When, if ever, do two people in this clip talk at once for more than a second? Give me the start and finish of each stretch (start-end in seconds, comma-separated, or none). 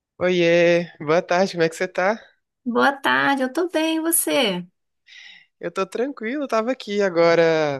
none